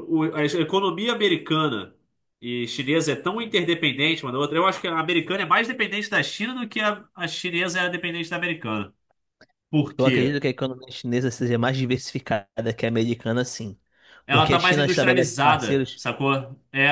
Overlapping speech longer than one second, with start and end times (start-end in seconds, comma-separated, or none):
14.3-16.0